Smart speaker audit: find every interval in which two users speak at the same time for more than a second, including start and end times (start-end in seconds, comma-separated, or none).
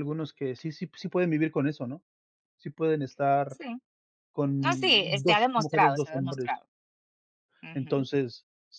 4.6-6.5